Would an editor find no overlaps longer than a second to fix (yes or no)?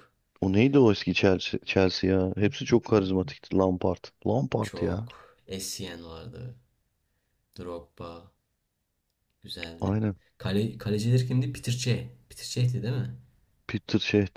yes